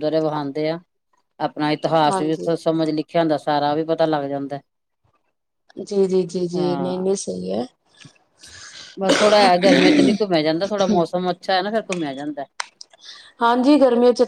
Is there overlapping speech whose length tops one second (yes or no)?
no